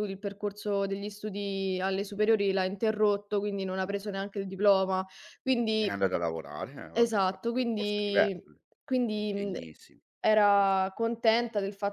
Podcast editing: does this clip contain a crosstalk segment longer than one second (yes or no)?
yes